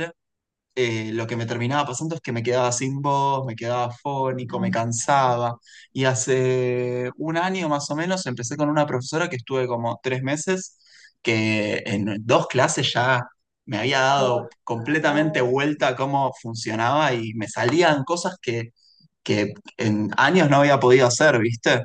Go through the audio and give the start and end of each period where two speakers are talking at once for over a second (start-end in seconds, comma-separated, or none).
14.2-15.6